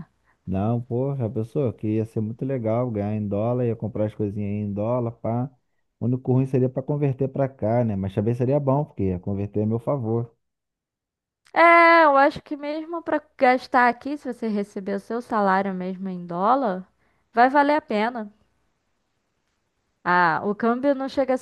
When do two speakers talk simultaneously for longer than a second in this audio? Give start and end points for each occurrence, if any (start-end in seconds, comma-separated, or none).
none